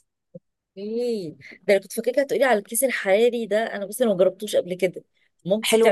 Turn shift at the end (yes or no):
yes